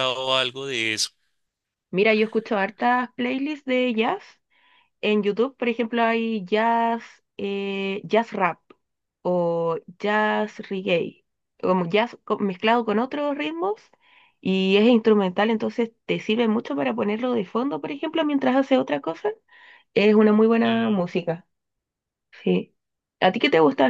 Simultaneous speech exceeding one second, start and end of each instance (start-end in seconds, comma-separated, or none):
none